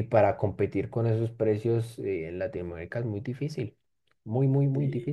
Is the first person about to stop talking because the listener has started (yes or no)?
yes